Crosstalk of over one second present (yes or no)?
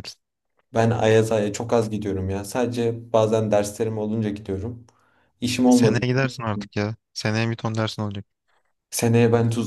no